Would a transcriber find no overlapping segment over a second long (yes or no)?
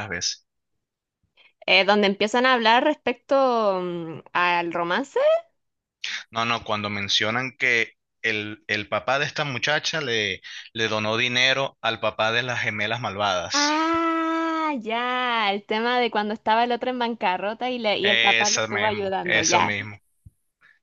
no